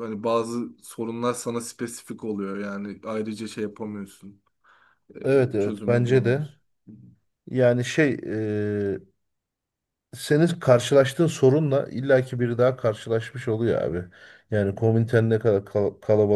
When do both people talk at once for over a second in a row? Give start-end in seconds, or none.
5.2-6.5